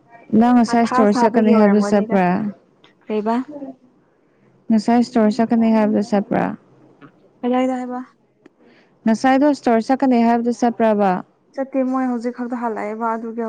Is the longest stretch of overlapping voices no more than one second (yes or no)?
no